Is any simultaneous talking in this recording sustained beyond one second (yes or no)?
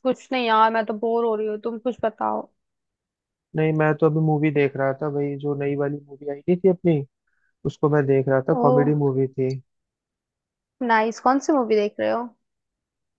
no